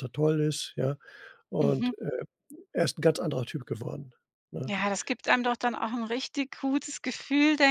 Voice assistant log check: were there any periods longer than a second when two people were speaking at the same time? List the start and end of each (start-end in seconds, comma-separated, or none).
none